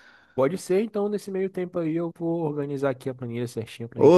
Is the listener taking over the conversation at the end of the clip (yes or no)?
yes